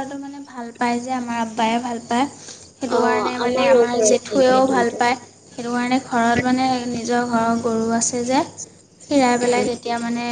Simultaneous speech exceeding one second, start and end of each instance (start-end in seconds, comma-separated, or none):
3.0-5.0